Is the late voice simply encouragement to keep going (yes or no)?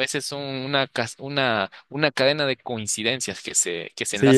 no